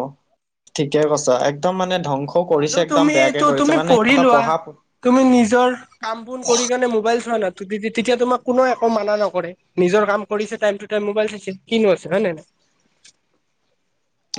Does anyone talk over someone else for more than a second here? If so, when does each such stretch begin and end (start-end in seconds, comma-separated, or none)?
2.5-4.4